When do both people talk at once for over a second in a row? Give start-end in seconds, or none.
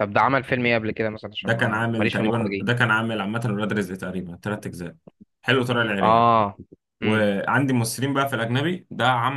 1.4-2.7